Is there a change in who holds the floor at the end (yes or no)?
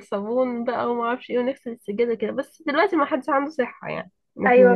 yes